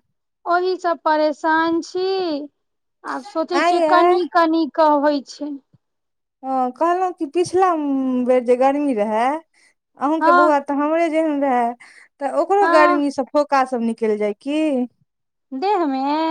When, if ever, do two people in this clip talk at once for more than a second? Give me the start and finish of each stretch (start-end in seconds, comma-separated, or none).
none